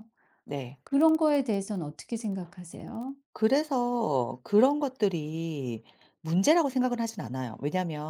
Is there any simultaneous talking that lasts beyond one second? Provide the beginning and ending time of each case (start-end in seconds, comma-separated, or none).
none